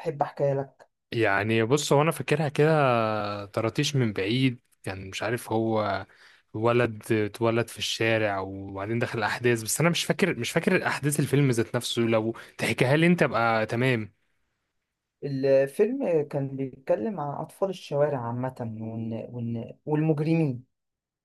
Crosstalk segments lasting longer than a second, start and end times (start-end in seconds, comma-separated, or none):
none